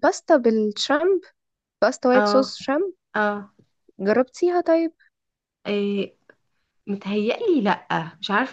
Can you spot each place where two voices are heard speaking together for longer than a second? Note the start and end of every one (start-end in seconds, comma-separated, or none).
none